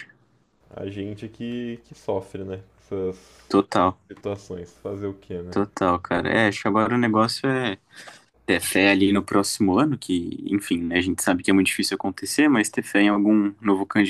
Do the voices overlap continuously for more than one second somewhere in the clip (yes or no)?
no